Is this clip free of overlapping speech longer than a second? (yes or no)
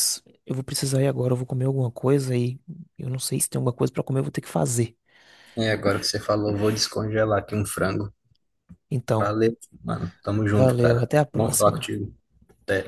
no